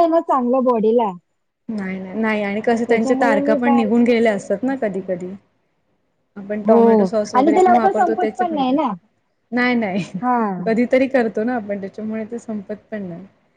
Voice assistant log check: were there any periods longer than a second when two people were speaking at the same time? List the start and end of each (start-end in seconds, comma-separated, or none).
2.9-5.1, 6.7-8.8